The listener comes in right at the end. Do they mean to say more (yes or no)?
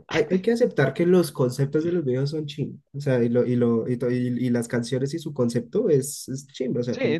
yes